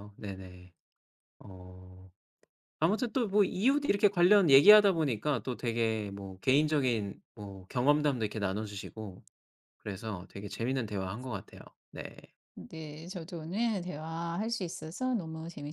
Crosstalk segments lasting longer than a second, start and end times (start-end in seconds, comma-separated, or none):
none